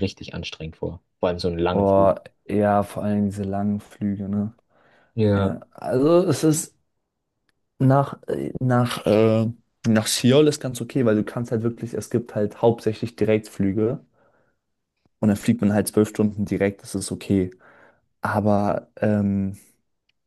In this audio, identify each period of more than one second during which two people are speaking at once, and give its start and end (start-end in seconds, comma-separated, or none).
none